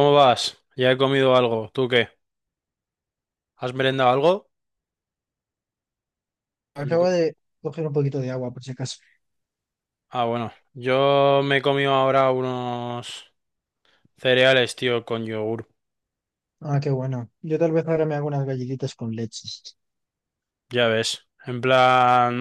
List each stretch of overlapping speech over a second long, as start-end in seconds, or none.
none